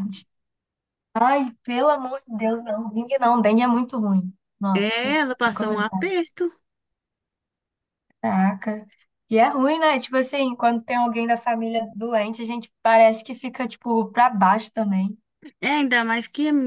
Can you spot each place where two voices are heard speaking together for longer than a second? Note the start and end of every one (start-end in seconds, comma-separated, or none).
4.7-6.1